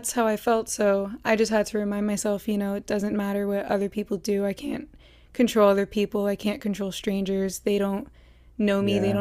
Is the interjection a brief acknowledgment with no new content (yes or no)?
yes